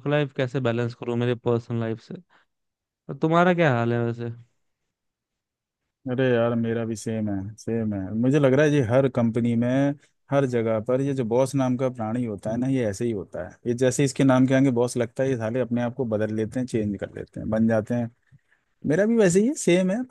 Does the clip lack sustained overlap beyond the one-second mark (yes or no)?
yes